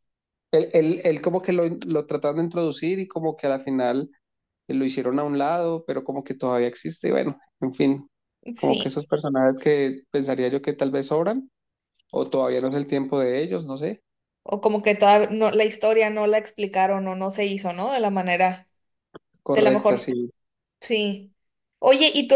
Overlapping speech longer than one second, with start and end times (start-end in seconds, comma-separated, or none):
none